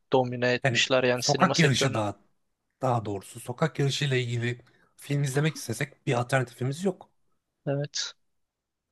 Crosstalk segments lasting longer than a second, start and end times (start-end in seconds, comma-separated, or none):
0.6-2.0